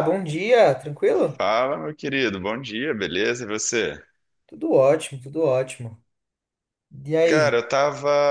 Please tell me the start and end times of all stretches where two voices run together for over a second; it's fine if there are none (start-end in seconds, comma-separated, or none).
none